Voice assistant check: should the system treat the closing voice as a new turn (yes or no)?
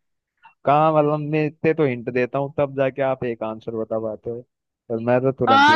yes